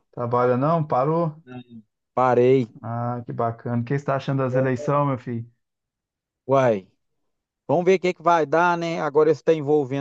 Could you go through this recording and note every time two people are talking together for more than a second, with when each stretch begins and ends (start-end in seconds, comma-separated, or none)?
none